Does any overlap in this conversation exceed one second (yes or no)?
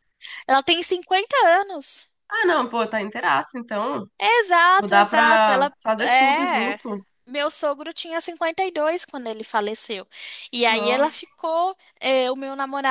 yes